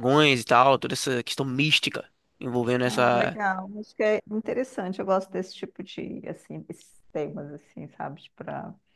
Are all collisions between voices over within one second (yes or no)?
yes